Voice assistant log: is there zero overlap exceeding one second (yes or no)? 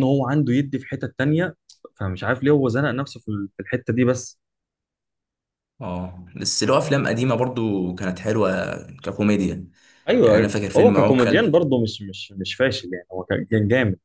no